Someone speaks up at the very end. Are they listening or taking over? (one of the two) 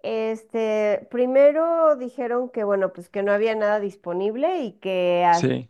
listening